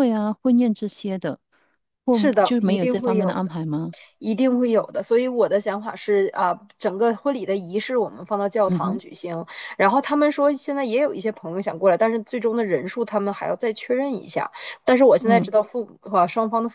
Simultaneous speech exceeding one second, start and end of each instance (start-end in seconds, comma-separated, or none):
2.1-3.5